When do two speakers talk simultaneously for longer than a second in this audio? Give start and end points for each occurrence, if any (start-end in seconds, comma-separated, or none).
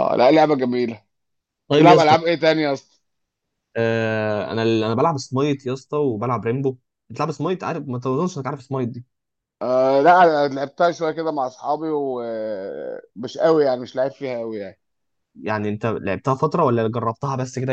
none